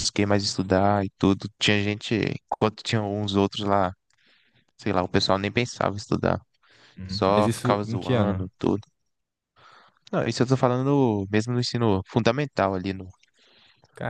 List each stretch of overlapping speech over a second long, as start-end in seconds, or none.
7.1-8.5